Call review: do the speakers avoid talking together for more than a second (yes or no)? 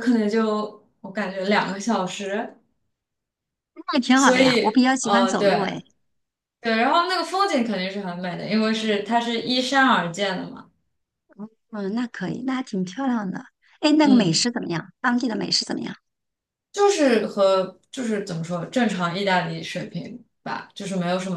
no